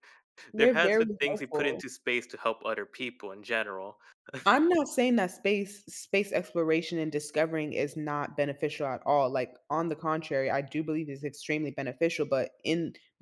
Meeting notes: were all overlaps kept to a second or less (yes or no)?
no